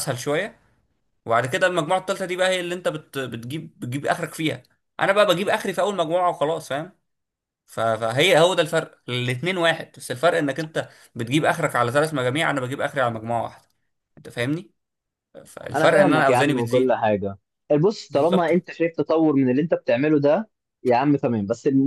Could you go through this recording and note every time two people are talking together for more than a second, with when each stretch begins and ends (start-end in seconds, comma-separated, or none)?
15.7-17.0